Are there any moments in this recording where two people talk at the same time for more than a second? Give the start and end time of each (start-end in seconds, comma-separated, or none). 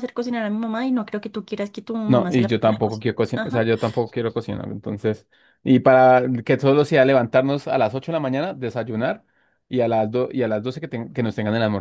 2.0-3.7